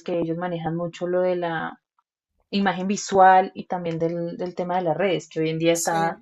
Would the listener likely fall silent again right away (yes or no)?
yes